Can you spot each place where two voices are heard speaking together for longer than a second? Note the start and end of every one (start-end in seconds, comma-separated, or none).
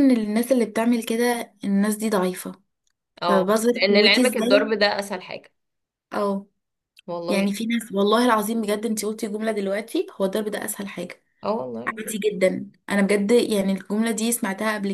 3.2-4.7